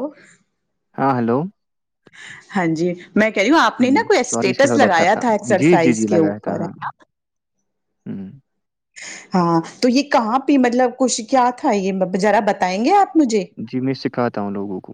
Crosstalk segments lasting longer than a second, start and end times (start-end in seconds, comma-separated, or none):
4.3-6.7